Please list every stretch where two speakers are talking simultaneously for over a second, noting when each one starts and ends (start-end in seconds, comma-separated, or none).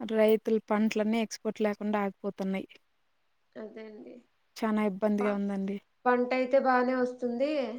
none